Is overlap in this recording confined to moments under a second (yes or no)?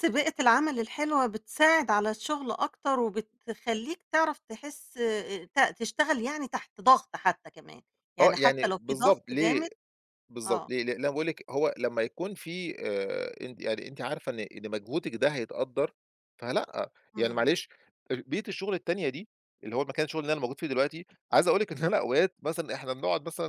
no